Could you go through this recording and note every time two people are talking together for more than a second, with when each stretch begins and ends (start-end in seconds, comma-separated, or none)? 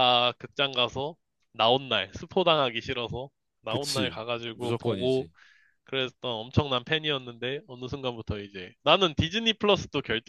3.7-5.3